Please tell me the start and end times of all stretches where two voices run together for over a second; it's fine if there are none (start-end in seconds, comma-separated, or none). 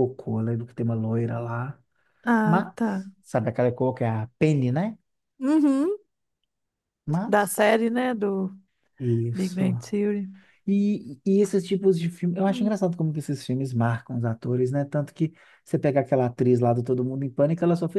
none